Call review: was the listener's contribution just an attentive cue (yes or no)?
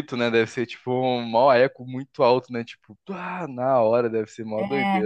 no